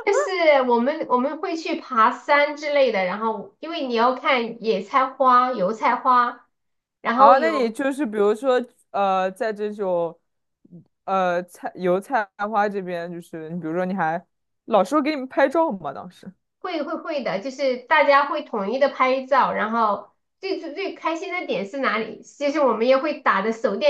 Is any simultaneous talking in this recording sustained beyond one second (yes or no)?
no